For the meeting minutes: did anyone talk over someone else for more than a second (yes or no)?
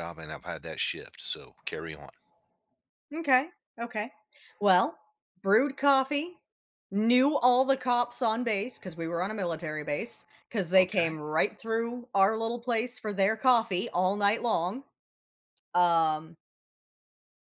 no